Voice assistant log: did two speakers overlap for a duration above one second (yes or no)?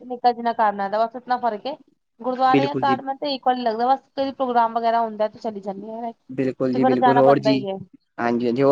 no